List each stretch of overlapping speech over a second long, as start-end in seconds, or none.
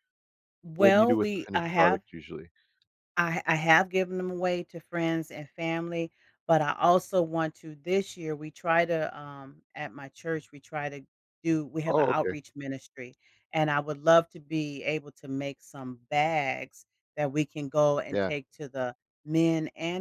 0.8-2.0